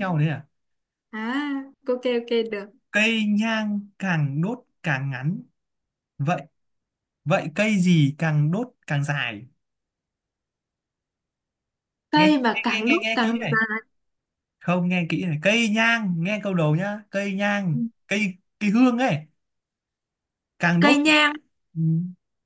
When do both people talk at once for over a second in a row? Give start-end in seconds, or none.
12.2-13.6